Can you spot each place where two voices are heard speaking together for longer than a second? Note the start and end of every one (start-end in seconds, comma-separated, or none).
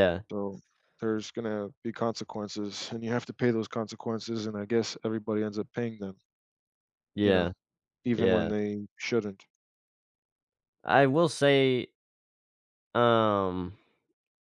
none